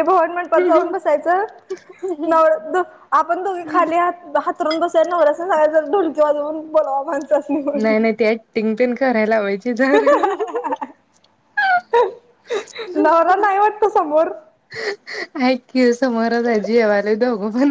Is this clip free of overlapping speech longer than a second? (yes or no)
yes